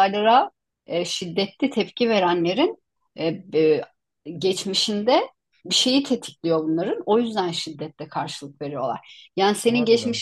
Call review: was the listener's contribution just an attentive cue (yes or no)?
yes